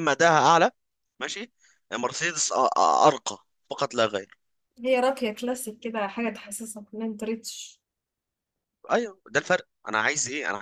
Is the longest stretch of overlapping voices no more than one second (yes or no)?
yes